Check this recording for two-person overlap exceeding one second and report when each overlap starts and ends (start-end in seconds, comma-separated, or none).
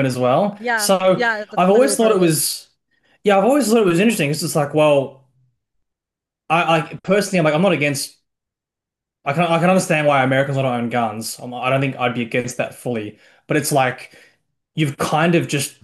0.6-2.3